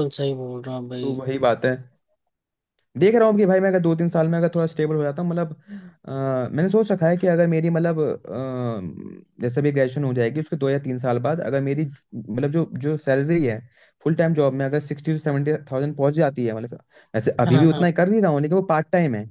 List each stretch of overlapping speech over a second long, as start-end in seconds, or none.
none